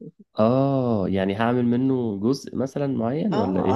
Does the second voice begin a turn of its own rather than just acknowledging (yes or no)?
yes